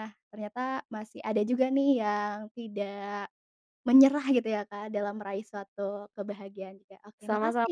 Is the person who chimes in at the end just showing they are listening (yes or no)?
no